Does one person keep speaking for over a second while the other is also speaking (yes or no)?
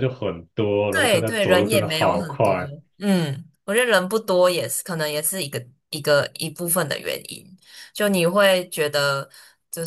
yes